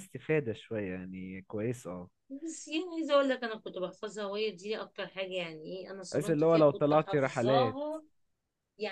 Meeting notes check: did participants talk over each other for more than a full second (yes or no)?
yes